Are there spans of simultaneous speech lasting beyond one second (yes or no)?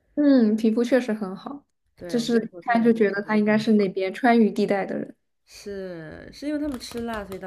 yes